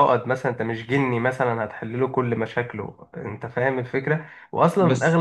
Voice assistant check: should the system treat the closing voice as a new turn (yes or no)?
no